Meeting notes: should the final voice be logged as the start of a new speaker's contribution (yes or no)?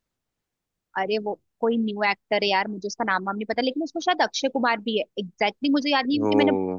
no